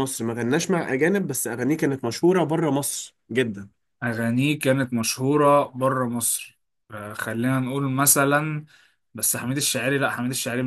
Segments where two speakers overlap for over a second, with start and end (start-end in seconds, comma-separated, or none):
none